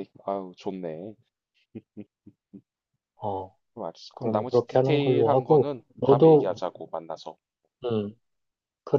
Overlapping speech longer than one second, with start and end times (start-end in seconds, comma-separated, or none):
4.1-6.5